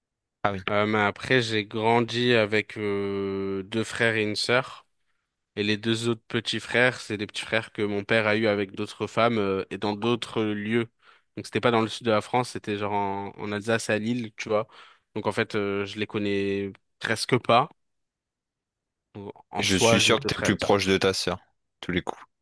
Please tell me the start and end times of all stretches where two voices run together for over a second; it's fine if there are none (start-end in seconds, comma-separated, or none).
19.6-20.8